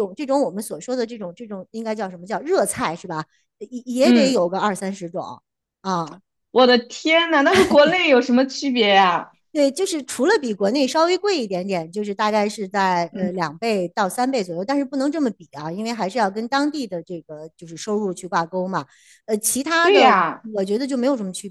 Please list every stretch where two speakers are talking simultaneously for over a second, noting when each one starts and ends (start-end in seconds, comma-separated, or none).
none